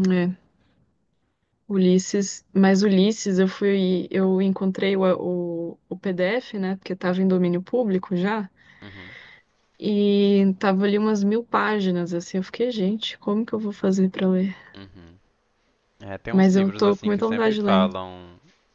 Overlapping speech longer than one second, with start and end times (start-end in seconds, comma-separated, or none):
16.3-17.9